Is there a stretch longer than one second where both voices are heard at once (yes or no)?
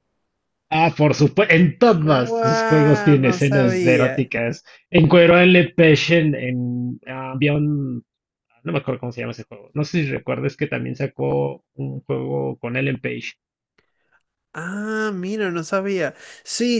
yes